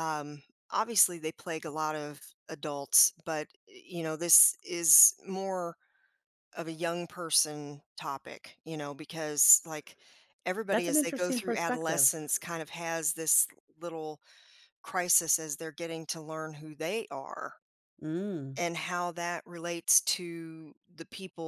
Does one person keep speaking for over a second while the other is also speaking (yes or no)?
yes